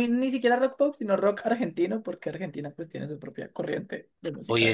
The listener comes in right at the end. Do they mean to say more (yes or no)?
yes